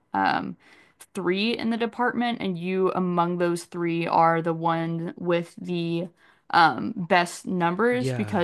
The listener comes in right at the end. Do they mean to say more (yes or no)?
no